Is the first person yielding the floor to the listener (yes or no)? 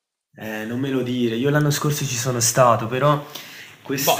no